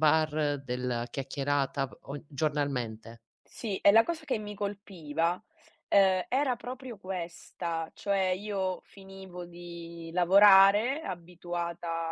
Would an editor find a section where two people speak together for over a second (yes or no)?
no